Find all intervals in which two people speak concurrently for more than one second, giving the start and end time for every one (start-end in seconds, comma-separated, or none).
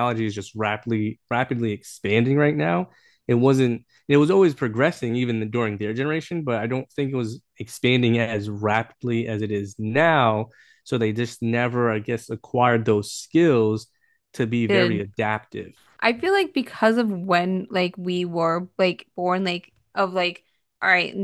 none